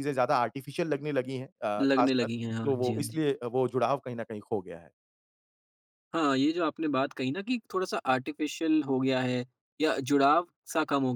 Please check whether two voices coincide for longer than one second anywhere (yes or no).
yes